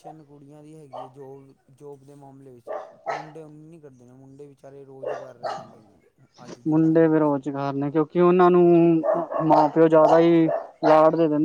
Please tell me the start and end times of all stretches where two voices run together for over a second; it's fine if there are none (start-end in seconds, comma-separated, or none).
none